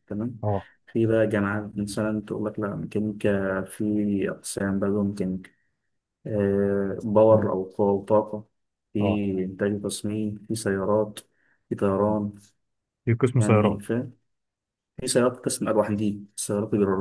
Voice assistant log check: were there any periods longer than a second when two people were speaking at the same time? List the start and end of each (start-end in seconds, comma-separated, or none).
none